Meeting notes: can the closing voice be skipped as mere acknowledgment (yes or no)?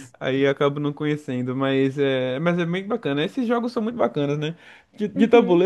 yes